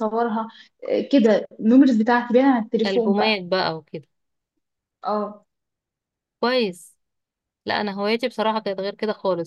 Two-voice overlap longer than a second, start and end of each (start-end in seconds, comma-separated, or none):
none